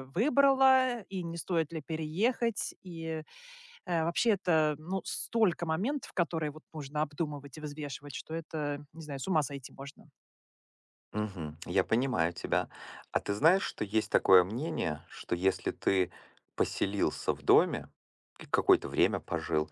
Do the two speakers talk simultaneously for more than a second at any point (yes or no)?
no